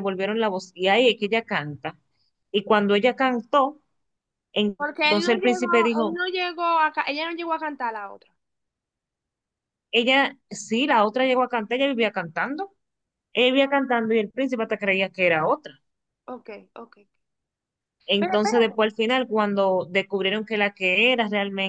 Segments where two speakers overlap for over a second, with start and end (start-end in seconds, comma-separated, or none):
4.8-6.2